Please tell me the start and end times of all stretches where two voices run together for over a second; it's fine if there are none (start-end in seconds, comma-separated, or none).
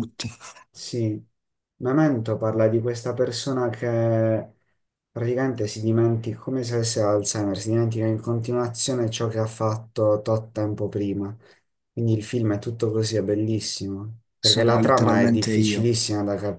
14.4-15.9